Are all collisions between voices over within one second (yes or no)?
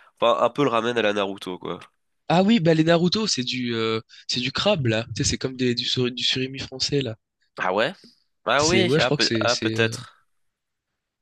no